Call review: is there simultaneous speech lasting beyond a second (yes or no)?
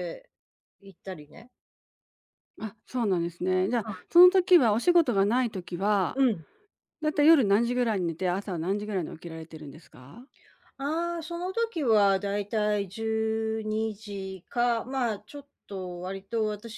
no